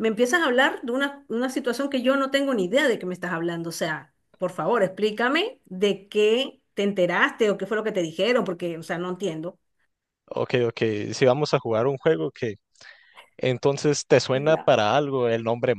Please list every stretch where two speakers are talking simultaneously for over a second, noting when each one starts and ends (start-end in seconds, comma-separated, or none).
none